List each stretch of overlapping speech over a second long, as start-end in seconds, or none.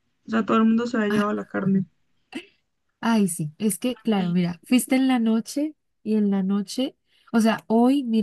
none